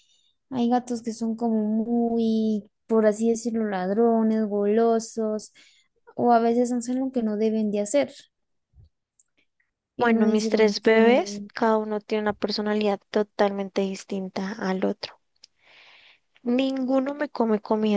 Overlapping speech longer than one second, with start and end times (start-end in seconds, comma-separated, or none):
10.0-11.5